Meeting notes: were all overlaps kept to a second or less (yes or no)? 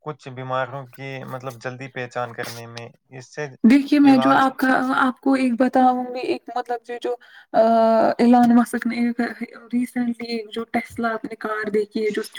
yes